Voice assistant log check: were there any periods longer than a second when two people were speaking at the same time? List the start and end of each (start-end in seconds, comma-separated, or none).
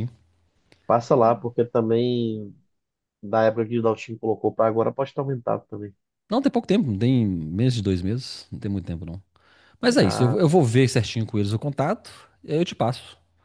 none